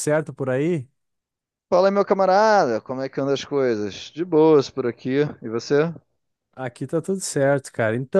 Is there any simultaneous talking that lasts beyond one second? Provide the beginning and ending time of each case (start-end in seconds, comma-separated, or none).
none